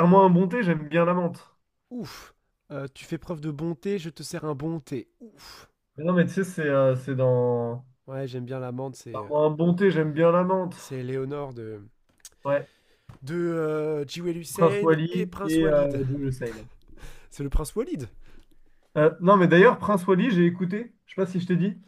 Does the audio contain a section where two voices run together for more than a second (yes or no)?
yes